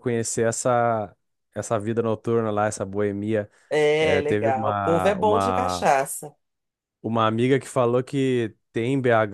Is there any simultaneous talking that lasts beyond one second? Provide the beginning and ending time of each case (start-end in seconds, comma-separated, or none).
4.0-5.9